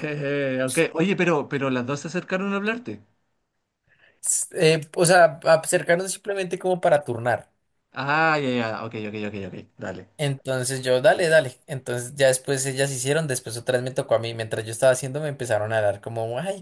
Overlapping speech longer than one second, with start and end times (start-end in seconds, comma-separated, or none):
none